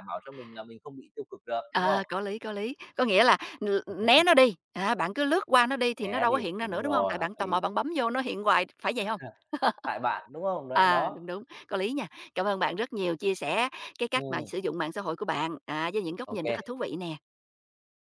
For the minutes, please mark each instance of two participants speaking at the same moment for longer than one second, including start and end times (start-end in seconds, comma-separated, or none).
6.0-7.6